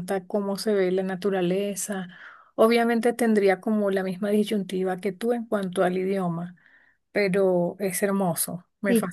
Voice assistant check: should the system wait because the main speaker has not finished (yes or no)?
no